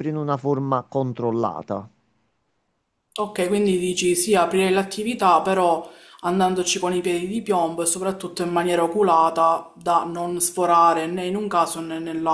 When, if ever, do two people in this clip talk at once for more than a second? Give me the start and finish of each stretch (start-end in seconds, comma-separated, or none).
none